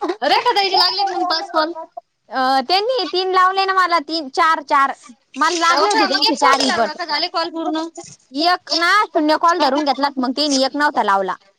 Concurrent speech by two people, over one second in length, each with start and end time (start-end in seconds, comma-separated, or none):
5.7-7.8